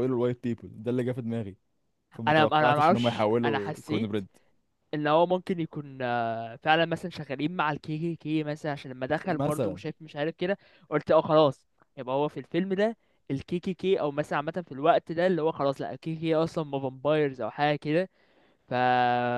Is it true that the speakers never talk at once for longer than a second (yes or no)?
no